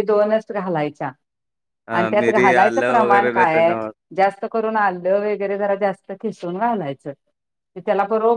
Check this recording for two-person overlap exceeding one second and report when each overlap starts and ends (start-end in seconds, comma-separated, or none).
2.0-3.8